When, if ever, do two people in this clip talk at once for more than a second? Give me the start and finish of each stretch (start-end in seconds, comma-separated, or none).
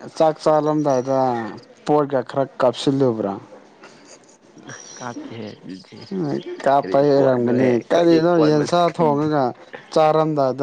6.8-9.2